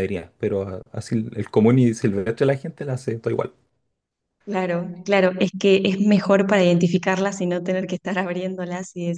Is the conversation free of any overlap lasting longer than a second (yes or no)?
yes